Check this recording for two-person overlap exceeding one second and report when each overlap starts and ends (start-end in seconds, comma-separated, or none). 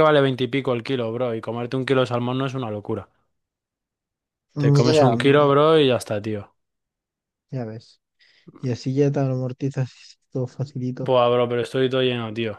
none